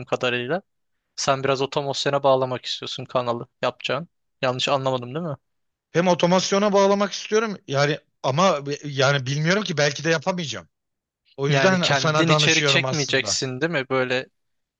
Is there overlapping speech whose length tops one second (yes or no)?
yes